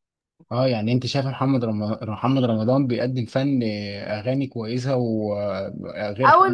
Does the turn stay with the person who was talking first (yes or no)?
no